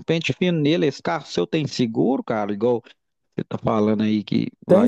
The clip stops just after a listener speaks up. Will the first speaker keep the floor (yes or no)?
no